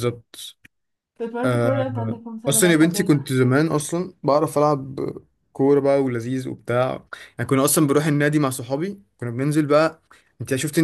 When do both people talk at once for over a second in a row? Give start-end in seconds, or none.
1.4-3.2